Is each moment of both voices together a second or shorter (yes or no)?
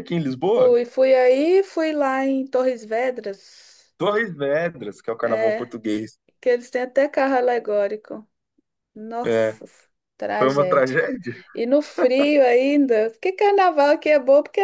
yes